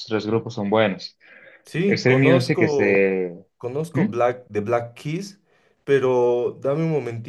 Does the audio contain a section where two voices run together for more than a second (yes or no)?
yes